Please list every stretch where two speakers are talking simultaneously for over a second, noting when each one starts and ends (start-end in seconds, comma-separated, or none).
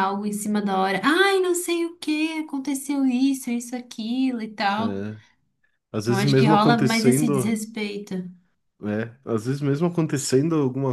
6.0-7.6